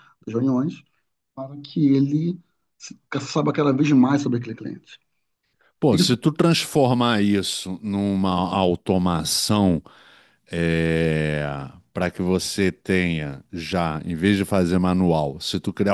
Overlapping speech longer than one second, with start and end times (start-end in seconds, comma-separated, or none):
none